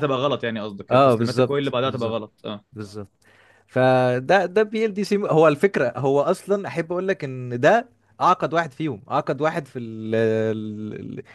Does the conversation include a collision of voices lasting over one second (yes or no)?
yes